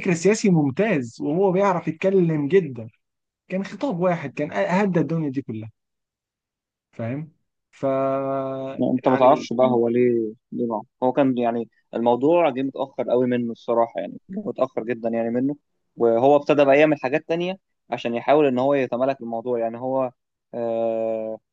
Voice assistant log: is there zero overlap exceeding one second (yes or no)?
yes